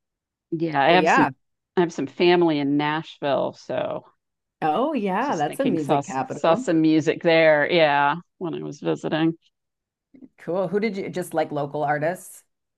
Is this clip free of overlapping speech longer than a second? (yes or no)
no